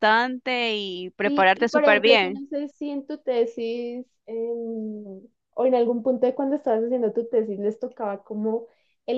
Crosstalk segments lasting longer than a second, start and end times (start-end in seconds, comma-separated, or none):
1.2-2.5